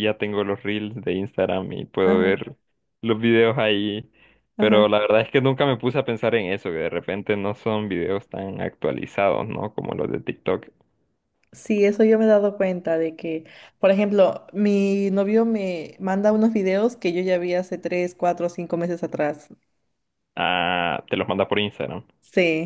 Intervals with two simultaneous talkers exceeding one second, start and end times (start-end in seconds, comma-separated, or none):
none